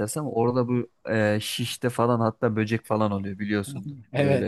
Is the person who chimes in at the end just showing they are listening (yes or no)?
yes